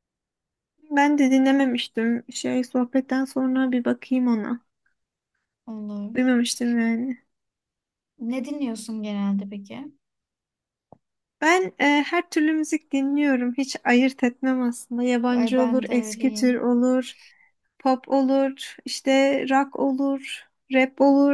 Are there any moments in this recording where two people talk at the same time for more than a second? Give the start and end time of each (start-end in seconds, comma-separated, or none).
15.3-16.6